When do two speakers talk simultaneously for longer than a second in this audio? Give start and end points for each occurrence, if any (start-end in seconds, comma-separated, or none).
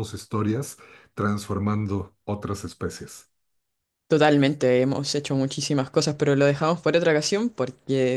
none